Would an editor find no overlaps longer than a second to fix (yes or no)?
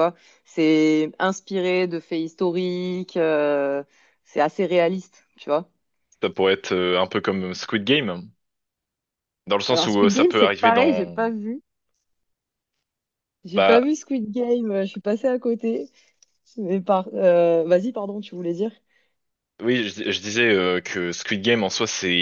no